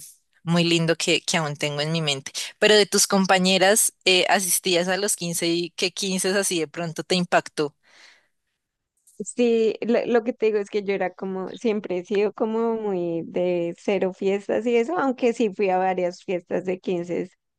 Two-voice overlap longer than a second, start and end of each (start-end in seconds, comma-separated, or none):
none